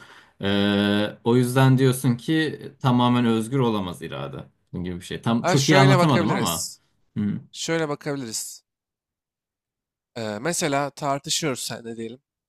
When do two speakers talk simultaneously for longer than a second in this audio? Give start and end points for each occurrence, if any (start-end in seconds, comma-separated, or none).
5.4-6.7